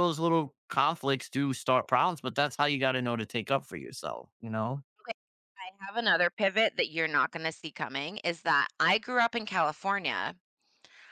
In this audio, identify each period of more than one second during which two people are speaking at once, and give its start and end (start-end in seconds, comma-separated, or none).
none